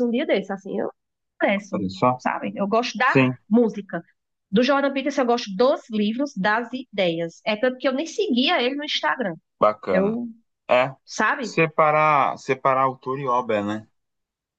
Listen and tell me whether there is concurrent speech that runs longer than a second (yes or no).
no